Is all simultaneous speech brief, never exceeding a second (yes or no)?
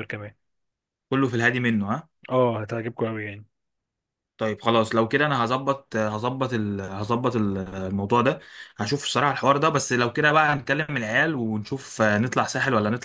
yes